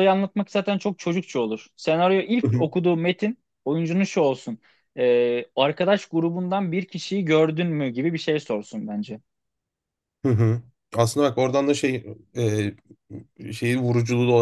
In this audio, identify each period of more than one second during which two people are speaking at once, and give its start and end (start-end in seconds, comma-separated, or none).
none